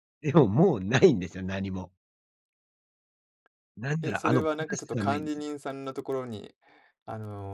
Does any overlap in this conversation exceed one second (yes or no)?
yes